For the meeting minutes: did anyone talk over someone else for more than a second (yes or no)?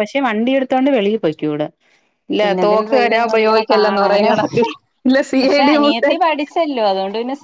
yes